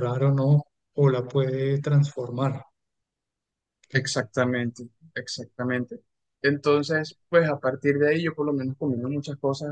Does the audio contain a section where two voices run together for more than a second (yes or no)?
no